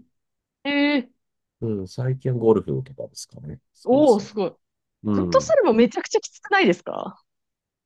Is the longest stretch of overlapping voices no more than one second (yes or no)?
yes